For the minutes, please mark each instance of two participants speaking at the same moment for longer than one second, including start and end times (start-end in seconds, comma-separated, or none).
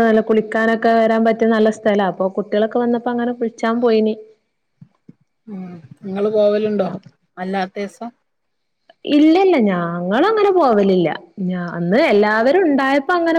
none